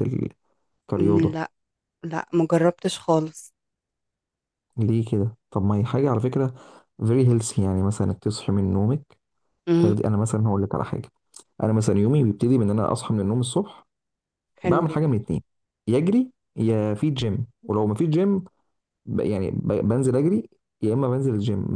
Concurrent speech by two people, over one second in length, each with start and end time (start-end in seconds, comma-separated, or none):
none